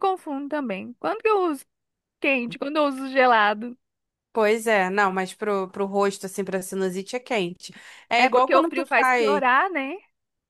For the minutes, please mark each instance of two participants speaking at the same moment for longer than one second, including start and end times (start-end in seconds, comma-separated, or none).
8.2-9.4